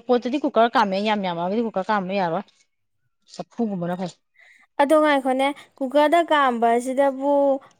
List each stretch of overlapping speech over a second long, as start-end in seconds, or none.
none